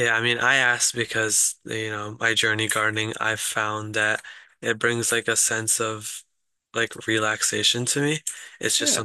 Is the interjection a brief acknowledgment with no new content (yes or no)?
yes